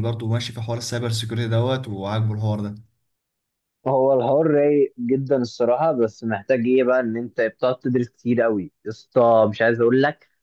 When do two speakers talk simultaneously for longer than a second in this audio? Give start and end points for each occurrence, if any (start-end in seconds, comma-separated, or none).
none